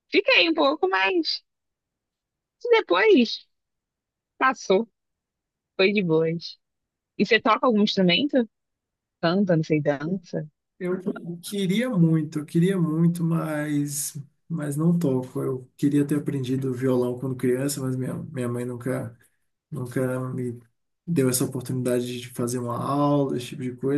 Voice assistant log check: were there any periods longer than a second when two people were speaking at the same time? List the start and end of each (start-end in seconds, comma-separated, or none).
none